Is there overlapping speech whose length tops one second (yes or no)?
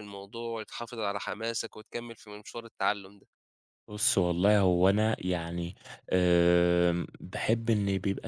no